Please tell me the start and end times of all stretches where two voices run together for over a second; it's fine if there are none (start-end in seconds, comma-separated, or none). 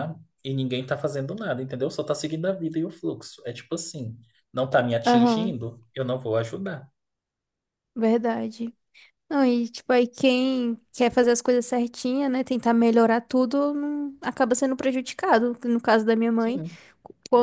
none